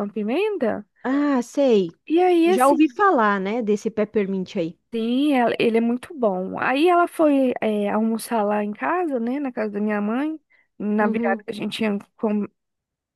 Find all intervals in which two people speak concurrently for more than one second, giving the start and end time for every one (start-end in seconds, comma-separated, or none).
none